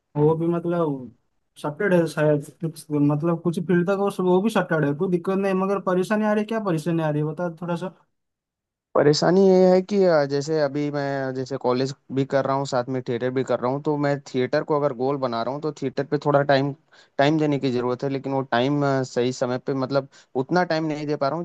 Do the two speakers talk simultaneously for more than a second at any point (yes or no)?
no